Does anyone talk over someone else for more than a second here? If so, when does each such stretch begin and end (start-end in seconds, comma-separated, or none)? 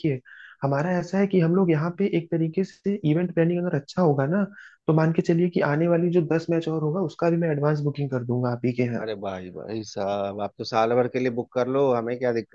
none